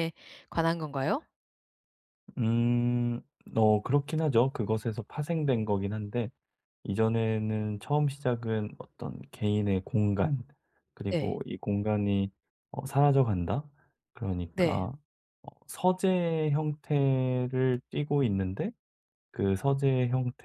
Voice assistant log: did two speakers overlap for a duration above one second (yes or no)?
no